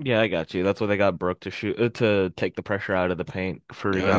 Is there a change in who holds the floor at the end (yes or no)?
yes